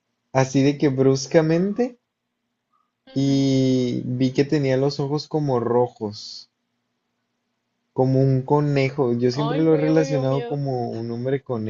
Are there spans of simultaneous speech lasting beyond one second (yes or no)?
yes